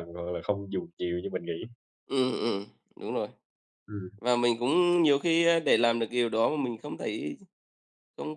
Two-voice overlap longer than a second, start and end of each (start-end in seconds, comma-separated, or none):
none